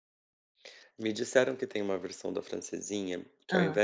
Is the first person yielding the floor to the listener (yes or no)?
no